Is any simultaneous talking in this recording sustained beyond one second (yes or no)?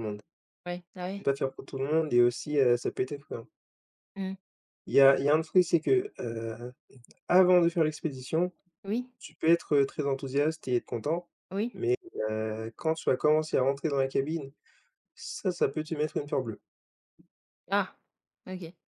no